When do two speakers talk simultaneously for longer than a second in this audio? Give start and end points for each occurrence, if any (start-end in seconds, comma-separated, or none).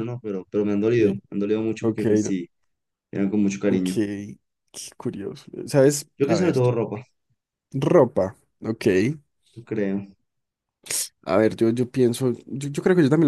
none